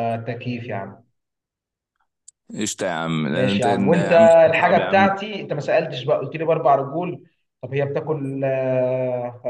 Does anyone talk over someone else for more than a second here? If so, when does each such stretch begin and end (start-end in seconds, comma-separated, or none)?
3.3-5.0